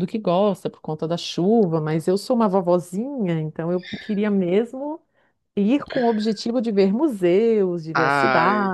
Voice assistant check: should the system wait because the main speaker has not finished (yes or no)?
no